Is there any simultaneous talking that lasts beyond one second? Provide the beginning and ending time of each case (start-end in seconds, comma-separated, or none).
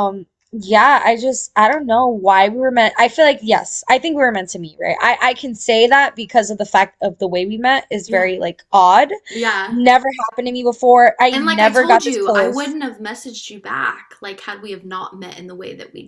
11.3-12.8